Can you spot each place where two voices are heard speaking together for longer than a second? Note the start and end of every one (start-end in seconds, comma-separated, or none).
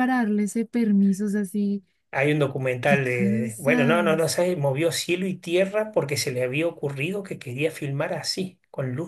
2.8-4.4